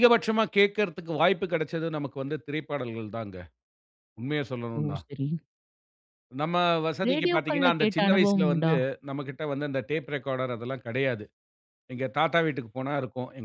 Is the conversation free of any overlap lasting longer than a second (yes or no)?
no